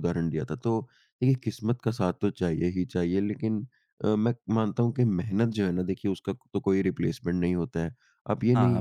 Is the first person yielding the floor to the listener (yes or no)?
no